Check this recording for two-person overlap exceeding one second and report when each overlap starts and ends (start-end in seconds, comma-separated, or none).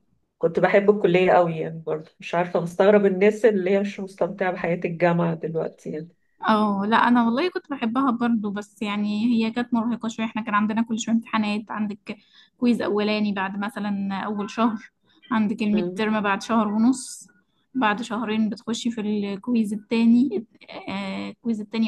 none